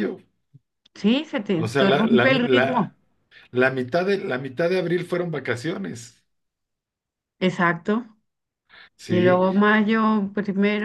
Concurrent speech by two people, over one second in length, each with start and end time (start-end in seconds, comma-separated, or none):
1.5-2.9